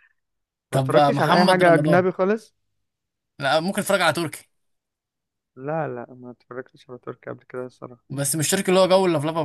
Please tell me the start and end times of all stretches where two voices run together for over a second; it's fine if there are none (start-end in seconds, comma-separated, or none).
0.7-2.0